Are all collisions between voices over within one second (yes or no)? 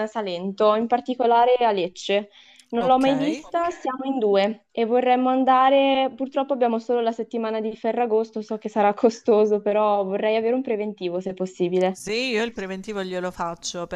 yes